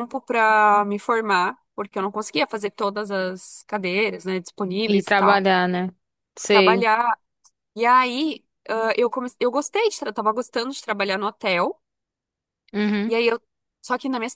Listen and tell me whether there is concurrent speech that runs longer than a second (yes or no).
no